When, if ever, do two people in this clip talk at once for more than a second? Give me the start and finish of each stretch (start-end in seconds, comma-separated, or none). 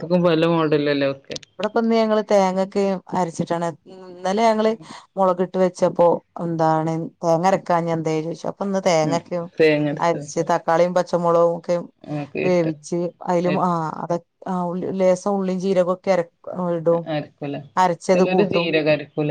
none